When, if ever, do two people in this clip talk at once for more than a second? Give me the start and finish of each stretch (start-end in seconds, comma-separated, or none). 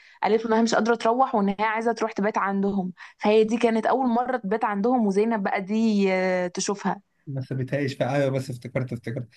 none